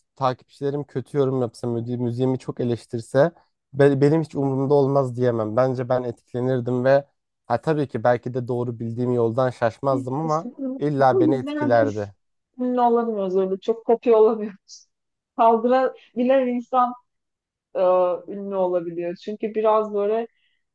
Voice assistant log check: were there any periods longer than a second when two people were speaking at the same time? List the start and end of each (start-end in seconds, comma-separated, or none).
9.9-12.1